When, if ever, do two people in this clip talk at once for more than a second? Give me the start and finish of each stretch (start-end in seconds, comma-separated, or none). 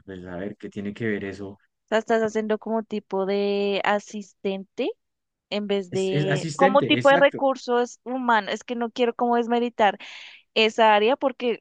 5.9-7.4